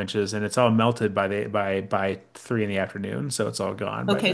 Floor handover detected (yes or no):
yes